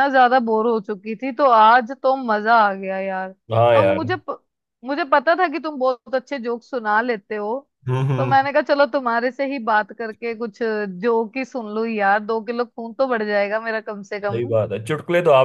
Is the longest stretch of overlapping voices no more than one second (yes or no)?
yes